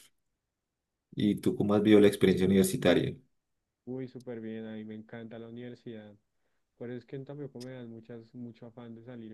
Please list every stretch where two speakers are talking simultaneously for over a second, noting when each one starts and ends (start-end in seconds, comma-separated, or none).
none